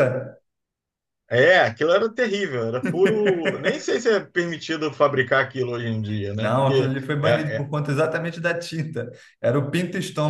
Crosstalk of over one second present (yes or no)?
yes